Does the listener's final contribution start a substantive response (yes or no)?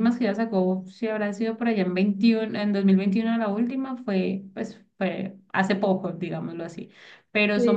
no